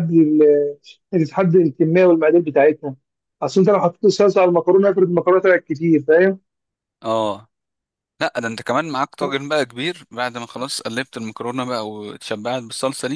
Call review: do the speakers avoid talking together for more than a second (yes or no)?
yes